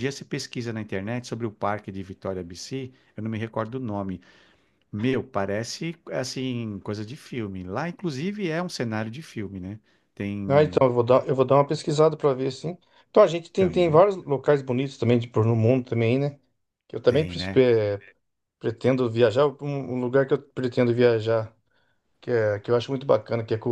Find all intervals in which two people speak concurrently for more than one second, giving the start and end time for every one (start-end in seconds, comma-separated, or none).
none